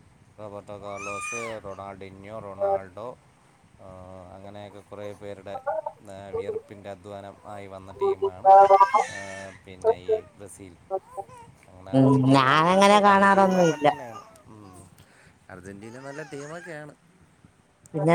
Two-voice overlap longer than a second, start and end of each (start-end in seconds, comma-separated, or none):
12.0-13.8